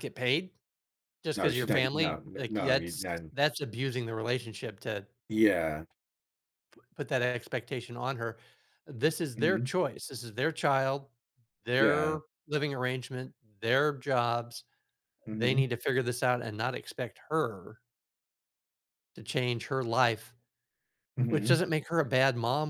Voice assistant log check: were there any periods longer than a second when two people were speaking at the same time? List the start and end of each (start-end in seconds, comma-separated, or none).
1.4-3.2